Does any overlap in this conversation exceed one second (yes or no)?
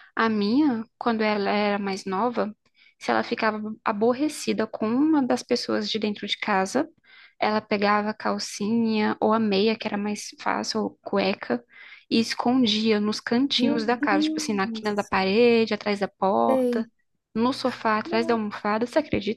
yes